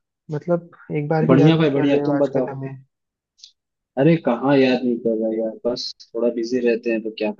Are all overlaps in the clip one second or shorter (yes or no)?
no